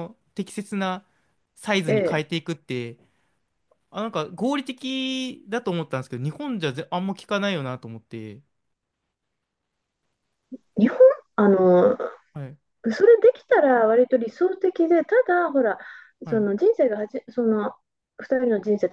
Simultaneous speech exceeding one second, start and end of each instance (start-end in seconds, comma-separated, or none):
none